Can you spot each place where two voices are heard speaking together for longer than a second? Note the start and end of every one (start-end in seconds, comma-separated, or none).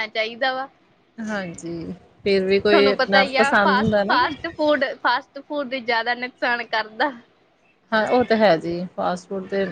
2.7-4.3